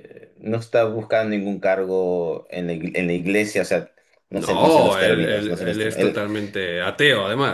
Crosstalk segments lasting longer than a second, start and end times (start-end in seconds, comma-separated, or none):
4.3-6.2